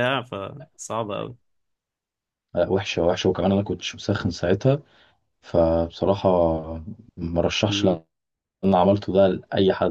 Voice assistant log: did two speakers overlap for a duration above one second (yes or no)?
no